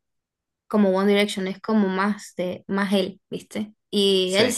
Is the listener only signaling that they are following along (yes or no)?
yes